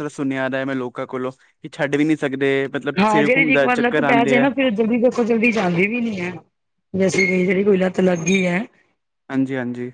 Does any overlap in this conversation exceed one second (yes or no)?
yes